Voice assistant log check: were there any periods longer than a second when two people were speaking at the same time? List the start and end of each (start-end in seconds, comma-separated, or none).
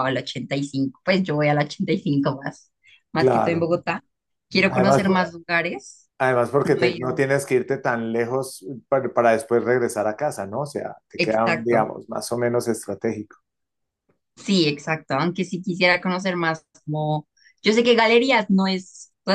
none